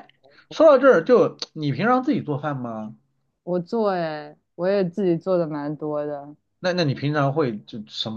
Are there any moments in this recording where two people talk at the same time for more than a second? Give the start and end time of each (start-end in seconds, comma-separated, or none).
none